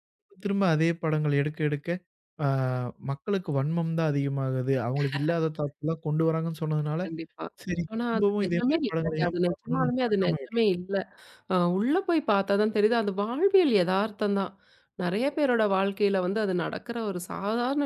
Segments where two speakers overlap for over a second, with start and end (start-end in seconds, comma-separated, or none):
7.9-10.6